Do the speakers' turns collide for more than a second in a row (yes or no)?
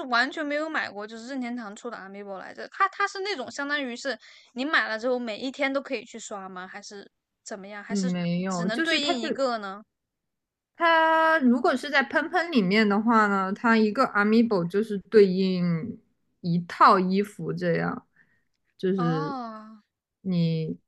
yes